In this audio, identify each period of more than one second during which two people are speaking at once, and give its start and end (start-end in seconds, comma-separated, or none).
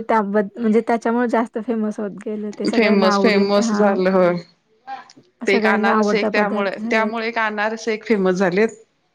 5.5-7.2